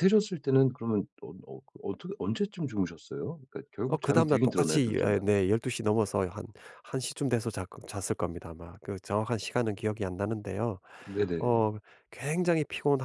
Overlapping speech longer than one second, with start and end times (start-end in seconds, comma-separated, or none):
3.9-5.3